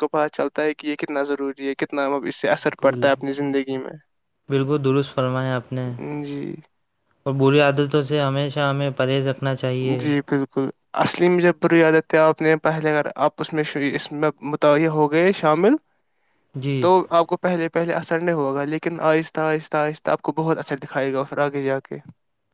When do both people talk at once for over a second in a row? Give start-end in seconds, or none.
none